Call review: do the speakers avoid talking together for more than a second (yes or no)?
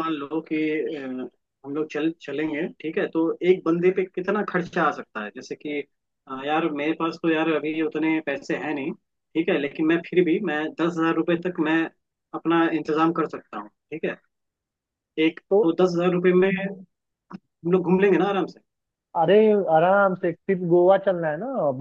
yes